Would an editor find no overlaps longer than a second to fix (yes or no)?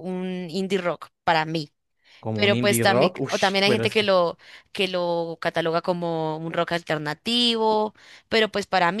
no